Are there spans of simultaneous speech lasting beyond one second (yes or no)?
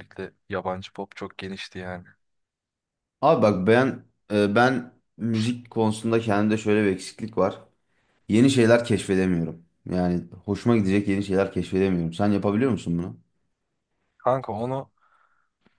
no